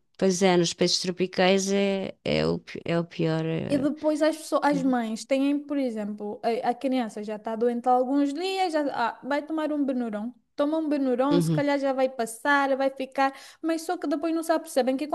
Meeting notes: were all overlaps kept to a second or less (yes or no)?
yes